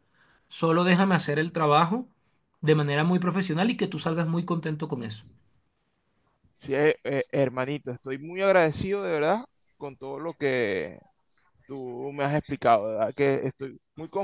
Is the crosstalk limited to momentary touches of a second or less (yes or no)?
yes